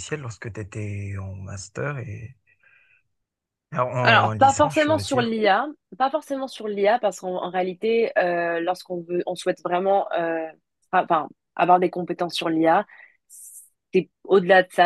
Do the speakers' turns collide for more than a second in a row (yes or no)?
yes